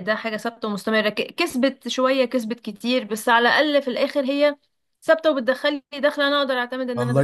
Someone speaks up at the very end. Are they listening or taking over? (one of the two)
taking over